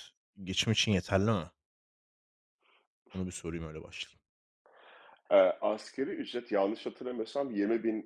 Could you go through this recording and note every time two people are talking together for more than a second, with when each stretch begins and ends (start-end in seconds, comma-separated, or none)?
none